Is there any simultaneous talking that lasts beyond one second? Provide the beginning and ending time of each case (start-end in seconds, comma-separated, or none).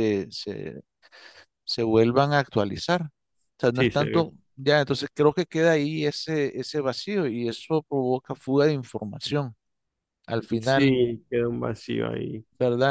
none